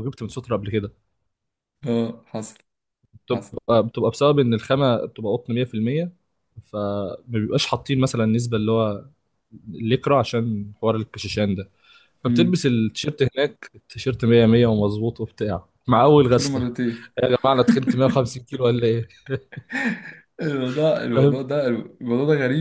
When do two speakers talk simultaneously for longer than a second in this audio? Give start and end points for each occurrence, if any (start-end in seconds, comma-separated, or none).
none